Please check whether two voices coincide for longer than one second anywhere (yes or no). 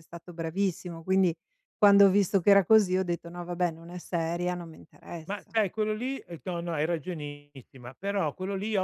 no